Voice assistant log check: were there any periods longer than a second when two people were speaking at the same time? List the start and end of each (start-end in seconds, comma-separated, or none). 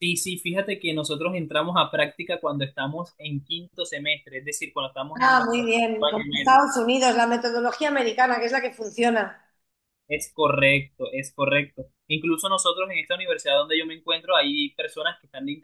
5.2-6.6